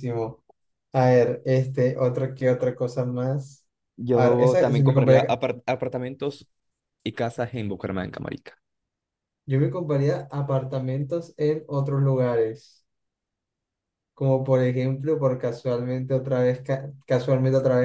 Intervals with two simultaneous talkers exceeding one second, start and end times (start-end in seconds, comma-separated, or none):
4.1-5.4